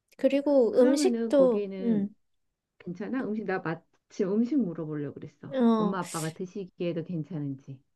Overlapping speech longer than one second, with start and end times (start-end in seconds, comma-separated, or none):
0.7-2.0